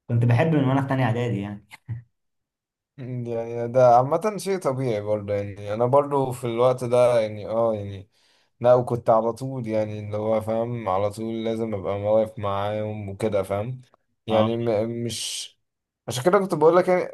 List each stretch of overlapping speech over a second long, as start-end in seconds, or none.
none